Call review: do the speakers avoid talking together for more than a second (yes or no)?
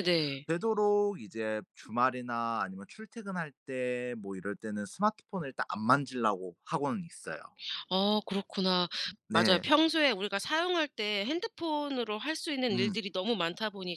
yes